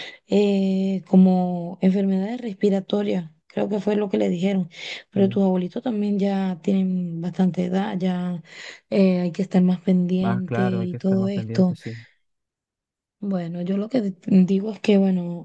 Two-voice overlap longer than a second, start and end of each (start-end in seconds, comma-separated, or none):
10.2-11.8